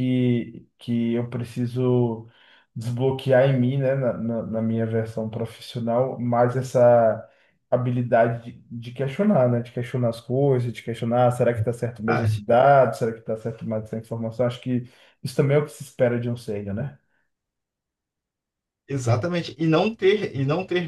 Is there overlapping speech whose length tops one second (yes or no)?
no